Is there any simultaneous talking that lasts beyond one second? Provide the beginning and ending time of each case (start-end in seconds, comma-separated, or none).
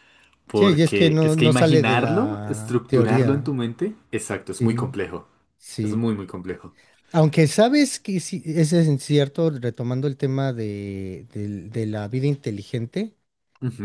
0.5-3.5